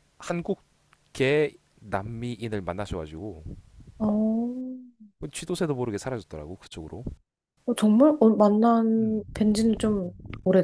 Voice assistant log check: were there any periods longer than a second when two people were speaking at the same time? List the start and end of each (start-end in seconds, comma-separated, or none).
none